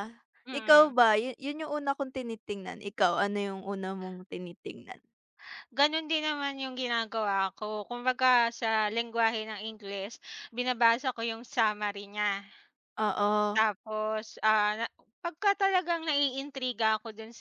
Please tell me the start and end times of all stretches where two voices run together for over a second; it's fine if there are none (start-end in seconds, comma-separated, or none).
none